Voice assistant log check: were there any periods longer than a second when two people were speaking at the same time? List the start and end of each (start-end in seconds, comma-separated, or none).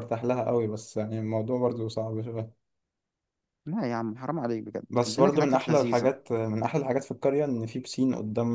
4.9-6.1